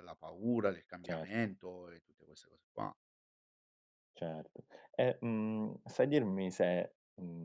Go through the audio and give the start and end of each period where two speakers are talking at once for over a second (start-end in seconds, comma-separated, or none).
none